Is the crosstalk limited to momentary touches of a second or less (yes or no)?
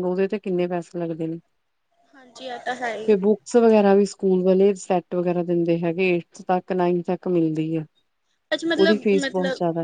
yes